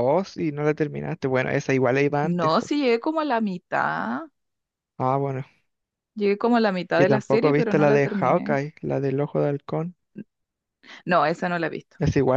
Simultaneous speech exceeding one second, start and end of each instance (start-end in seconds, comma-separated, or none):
6.9-8.6